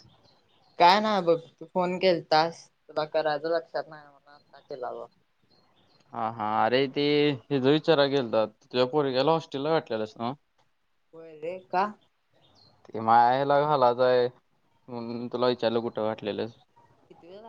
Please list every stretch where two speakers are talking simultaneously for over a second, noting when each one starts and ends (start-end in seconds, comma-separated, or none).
none